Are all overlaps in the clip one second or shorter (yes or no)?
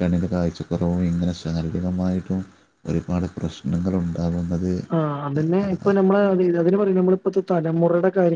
yes